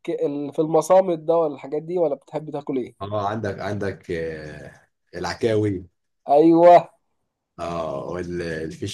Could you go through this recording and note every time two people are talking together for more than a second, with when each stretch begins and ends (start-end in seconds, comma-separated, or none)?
none